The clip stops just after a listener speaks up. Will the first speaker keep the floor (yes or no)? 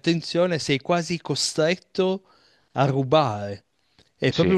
yes